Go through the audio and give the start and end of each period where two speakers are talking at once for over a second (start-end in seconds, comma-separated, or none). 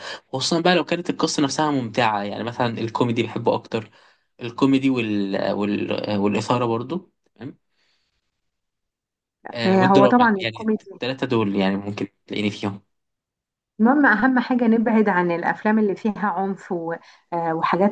9.7-10.9